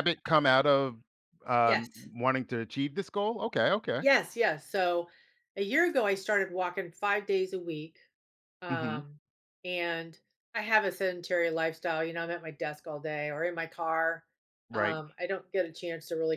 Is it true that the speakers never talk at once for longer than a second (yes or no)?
yes